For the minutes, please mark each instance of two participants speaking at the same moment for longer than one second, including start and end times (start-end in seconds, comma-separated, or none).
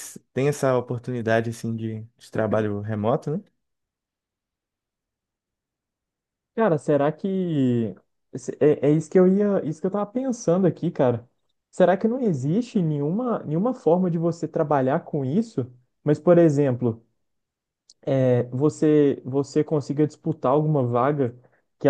none